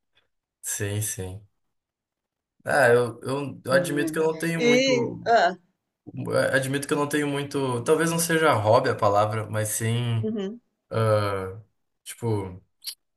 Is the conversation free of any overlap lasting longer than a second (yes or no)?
no